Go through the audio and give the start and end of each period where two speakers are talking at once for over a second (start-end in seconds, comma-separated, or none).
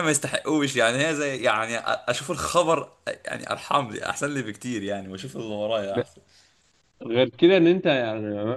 none